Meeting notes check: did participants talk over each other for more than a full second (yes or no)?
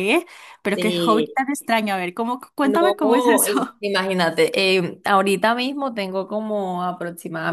yes